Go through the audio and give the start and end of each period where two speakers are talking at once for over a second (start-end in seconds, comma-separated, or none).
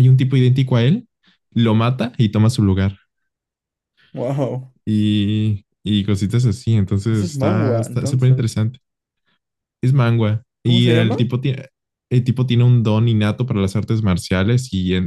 7.1-8.6